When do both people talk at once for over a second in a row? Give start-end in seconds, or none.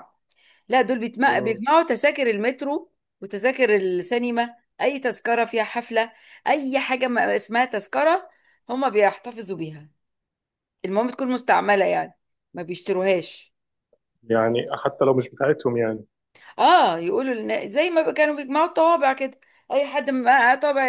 none